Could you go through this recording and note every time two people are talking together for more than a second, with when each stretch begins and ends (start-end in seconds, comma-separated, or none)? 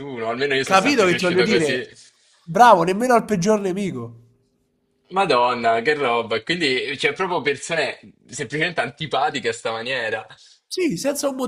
0.6-1.9